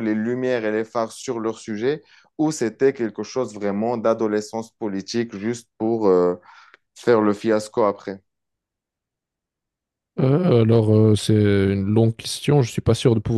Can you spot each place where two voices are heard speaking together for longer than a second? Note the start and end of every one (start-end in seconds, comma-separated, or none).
none